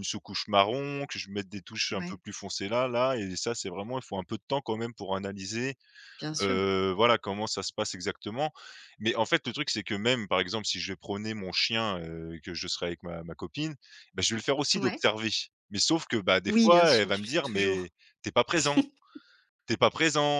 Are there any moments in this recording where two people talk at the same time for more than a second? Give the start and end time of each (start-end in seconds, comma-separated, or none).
16.5-17.9